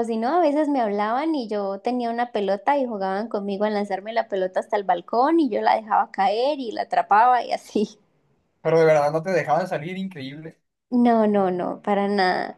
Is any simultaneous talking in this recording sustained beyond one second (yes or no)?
no